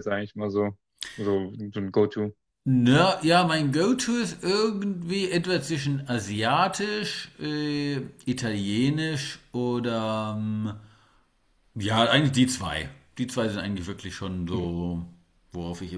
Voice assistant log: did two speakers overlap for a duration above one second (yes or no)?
no